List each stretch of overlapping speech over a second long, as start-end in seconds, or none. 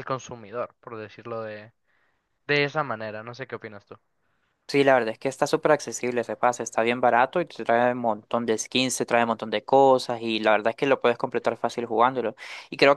none